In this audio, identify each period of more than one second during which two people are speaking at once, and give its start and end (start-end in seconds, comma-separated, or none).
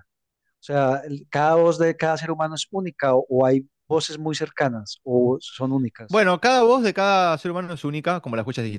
none